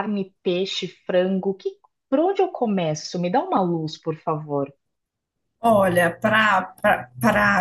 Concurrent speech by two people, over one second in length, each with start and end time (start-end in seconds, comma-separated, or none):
none